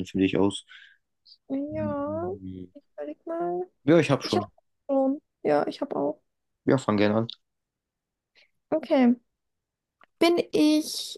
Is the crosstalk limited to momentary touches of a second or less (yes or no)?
yes